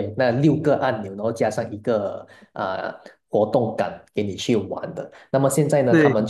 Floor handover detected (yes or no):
no